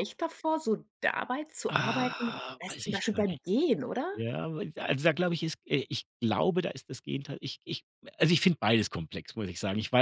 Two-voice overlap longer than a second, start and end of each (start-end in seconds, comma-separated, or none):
1.7-3.4